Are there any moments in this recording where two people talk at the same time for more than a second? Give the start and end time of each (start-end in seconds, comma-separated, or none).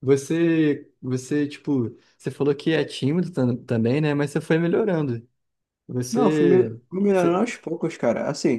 6.1-7.5